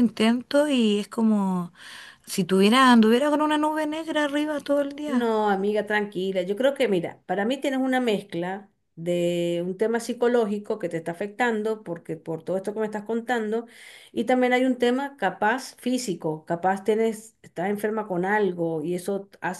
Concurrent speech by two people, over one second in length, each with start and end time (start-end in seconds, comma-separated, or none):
none